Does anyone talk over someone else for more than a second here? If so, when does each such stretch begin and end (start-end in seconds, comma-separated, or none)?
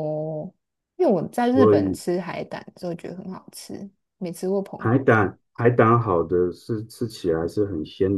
none